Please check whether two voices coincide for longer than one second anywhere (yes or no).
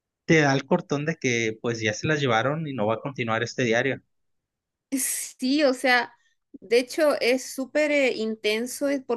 no